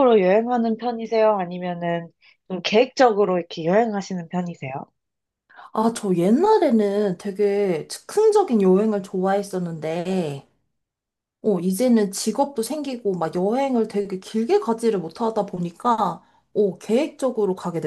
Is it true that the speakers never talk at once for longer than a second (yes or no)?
yes